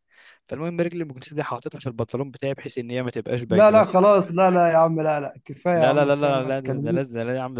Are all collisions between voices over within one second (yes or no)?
no